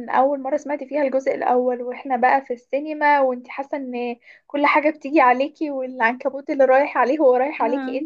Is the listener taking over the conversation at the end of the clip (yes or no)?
no